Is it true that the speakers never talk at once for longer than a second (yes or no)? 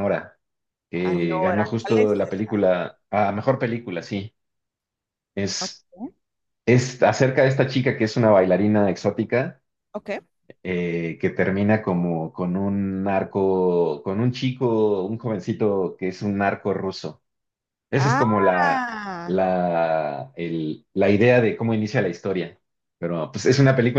no